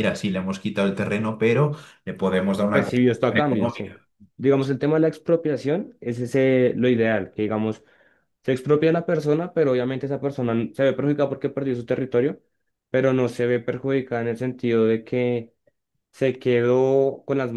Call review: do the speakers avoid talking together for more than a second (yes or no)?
no